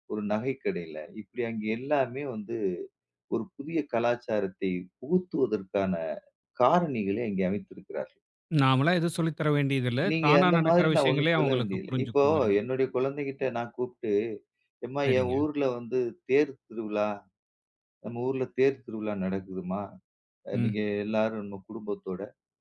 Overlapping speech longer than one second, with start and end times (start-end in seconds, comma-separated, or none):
10.1-12.2